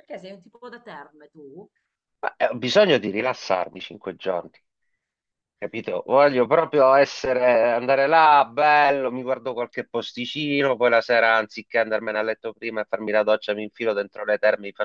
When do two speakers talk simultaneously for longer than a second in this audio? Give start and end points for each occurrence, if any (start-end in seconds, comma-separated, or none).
none